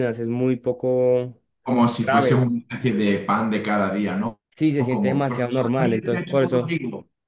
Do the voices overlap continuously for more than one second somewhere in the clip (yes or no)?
yes